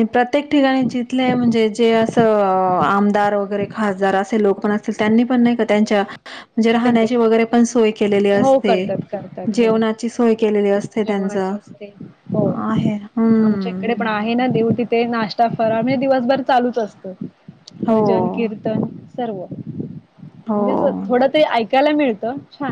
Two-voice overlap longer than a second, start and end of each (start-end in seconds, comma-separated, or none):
none